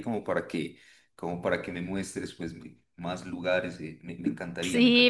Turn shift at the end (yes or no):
yes